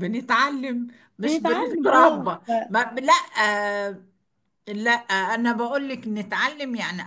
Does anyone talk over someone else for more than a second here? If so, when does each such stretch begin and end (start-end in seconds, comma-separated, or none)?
1.2-2.7